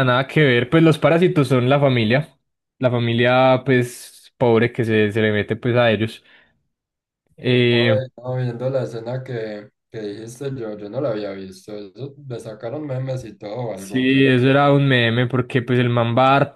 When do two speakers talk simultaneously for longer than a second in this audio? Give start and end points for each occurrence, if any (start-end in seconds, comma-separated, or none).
none